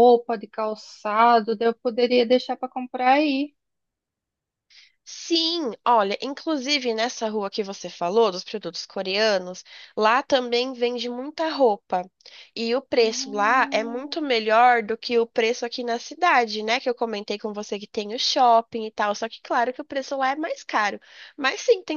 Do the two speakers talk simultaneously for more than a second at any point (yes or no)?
yes